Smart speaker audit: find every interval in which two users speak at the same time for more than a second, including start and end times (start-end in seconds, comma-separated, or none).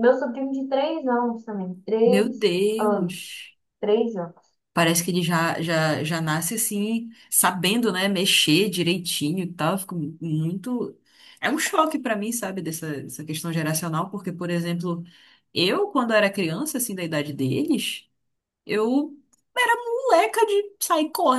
2.0-3.4